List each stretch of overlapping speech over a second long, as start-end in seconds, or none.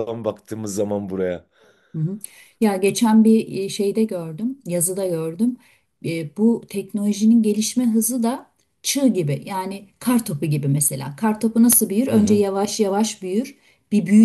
none